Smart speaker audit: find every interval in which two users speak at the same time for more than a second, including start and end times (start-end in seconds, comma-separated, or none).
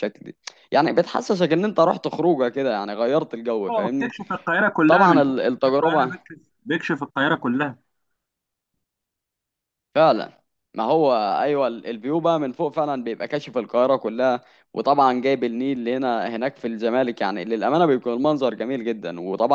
4.9-6.3